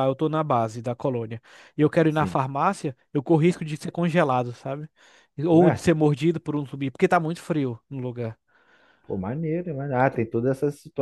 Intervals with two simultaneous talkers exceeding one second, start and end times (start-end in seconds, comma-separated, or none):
none